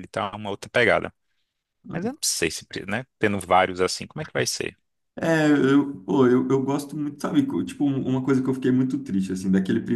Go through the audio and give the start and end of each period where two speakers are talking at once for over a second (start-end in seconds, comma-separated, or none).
none